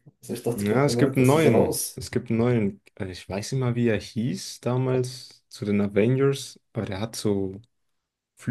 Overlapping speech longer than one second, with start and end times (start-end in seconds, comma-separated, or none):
0.5-2.0